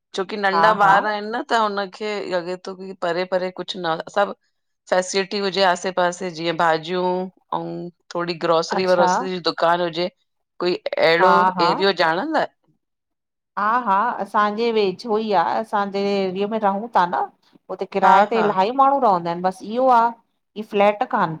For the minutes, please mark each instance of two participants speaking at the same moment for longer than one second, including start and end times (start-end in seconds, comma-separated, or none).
none